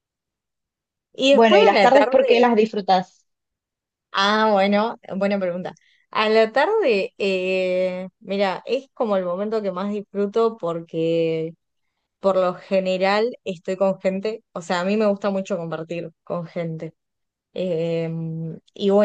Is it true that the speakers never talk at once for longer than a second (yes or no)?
no